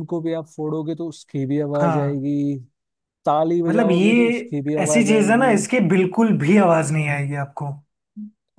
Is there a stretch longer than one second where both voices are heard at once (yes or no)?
yes